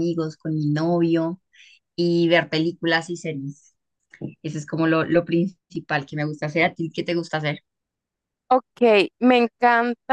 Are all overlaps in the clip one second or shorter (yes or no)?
yes